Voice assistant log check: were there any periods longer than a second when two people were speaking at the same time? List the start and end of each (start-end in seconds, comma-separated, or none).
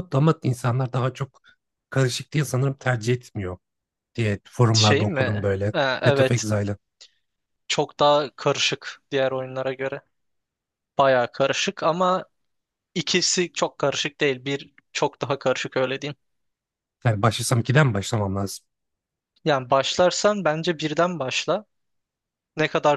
4.7-6.5